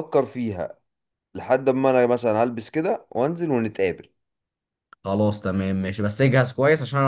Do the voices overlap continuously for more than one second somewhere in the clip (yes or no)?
no